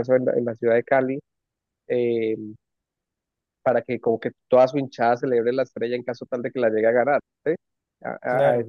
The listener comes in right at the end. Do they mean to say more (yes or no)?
no